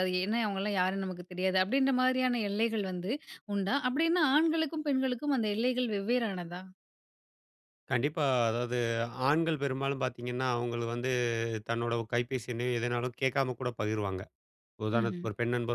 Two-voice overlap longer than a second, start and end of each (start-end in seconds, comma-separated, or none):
none